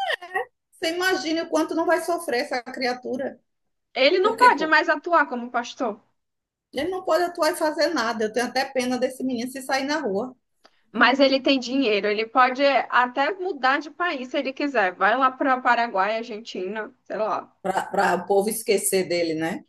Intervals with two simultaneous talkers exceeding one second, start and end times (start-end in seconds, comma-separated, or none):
none